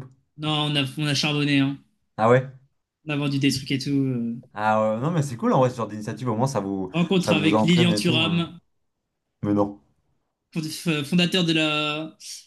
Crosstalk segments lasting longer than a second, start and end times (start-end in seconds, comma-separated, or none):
6.9-8.5